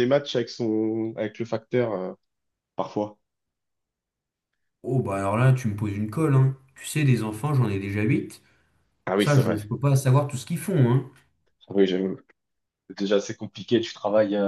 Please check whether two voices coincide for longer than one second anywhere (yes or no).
no